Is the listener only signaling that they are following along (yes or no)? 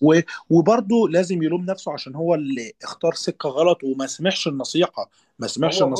yes